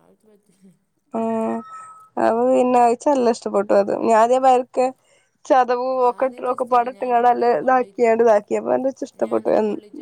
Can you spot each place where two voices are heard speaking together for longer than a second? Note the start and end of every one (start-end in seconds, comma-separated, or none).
6.1-8.2